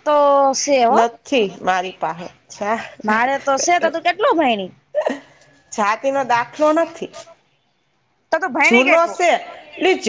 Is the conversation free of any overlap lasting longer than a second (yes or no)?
yes